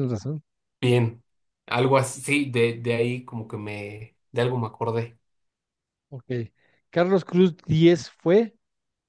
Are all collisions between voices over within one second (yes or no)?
yes